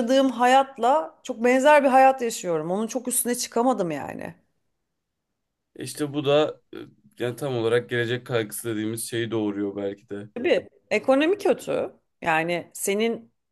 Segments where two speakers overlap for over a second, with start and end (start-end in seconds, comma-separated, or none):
none